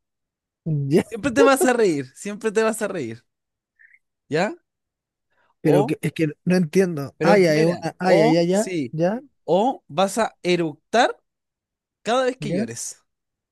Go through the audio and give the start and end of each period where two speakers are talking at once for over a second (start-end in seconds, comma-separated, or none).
7.2-8.9